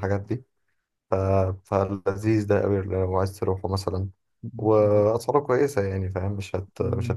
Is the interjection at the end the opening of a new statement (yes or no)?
yes